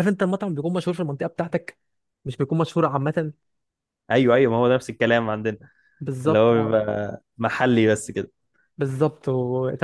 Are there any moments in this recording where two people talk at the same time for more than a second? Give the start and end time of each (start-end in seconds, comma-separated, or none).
none